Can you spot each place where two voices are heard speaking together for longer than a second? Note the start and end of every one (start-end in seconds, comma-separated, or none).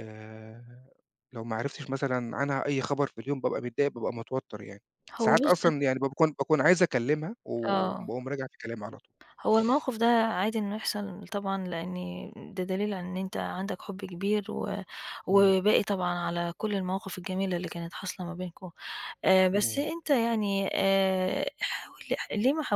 none